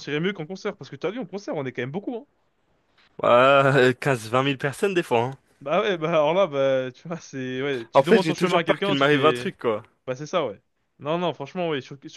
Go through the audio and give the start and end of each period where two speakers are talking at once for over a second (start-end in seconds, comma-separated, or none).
7.9-9.5